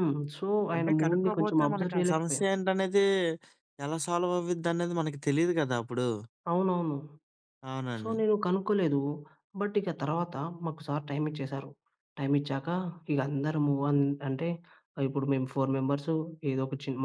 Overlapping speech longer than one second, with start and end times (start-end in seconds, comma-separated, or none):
0.7-2.4